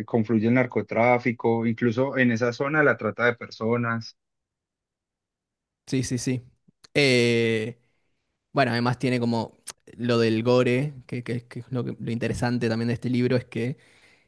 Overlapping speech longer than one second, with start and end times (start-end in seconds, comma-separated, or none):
none